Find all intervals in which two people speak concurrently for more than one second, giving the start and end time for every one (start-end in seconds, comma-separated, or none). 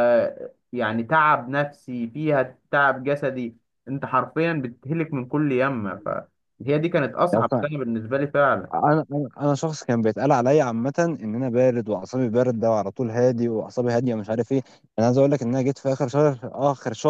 none